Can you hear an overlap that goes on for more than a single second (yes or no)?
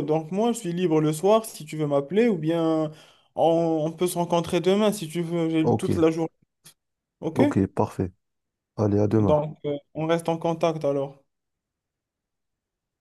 no